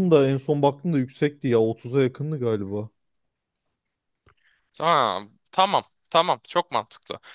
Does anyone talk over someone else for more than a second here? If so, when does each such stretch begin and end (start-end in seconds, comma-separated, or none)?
none